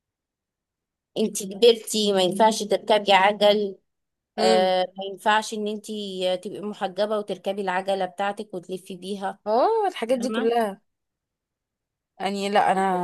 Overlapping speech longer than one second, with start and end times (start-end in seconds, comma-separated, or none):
none